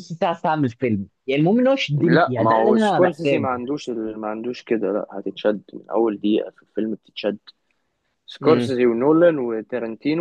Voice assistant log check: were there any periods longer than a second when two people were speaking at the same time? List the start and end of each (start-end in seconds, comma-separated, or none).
2.0-3.6